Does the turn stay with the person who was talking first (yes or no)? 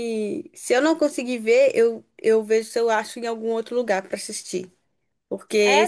no